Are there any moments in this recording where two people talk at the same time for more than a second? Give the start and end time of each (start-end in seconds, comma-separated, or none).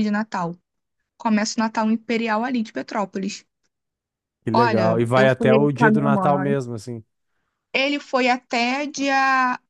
4.5-6.6